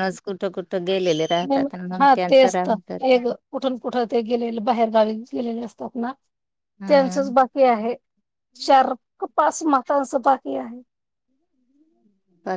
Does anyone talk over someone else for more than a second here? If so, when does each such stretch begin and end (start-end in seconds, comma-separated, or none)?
none